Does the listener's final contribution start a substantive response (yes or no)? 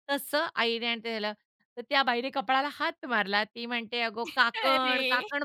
no